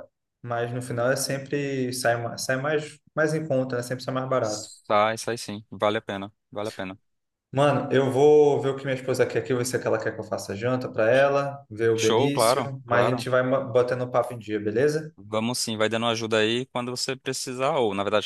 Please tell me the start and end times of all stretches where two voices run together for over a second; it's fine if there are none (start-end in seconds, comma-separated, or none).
12.0-13.3